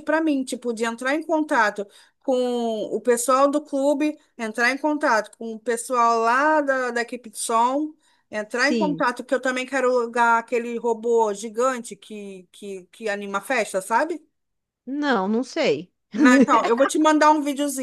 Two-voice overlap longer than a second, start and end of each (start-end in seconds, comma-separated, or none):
none